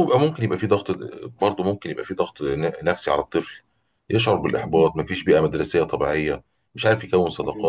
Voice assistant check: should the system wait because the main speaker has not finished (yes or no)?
yes